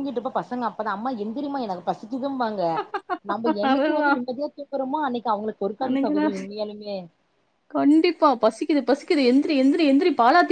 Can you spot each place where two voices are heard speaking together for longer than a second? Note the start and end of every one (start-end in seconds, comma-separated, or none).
none